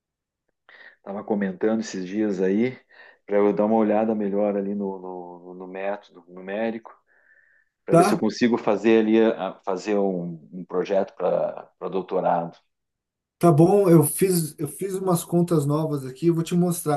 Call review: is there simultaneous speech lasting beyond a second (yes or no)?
no